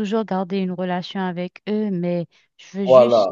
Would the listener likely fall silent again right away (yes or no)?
yes